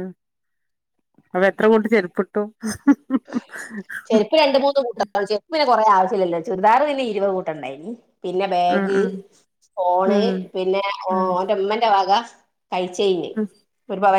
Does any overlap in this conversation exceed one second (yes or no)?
no